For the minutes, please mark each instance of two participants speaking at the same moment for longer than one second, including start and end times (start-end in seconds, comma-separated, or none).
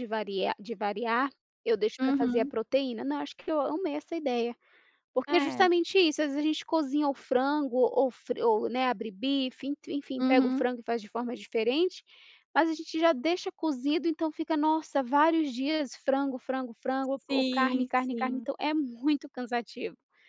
17.2-18.5